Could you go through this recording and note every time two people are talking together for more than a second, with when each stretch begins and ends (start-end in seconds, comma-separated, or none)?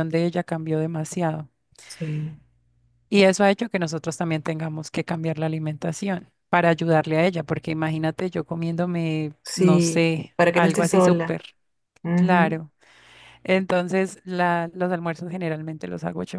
9.4-11.4